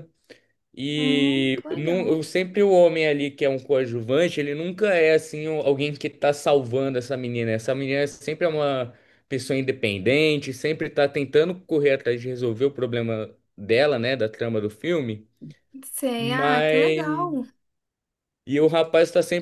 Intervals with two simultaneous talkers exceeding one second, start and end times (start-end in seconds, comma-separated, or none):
0.9-2.2, 16.2-17.4